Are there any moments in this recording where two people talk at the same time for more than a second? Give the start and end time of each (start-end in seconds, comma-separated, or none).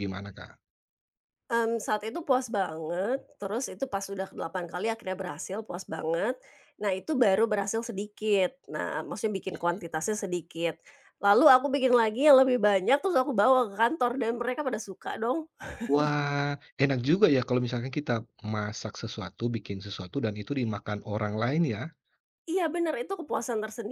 none